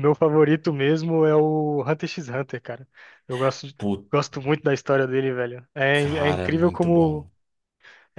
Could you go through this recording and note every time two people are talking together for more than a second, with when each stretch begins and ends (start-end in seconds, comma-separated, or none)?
5.9-7.3